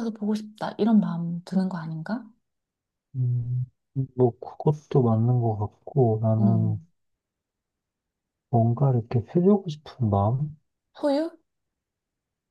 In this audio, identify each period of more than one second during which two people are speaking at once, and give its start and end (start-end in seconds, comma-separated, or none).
none